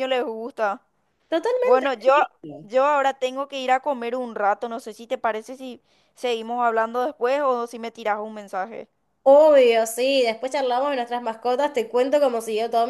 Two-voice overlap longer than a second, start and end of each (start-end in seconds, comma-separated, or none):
none